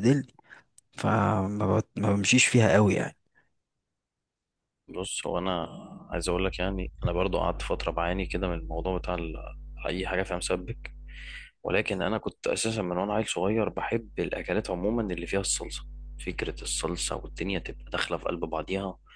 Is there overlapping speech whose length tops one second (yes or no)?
no